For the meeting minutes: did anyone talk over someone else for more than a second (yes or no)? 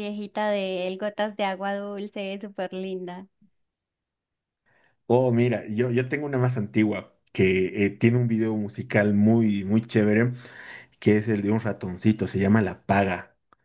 no